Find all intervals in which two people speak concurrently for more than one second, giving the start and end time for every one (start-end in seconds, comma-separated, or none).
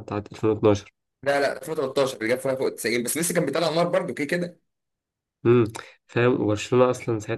none